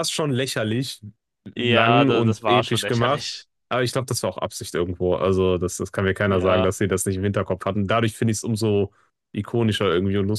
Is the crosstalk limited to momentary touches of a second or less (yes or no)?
no